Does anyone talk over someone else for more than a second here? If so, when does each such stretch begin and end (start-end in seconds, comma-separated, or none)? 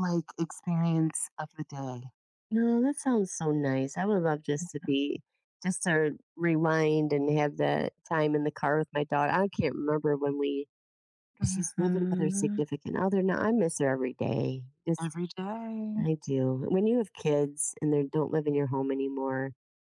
11.4-12.6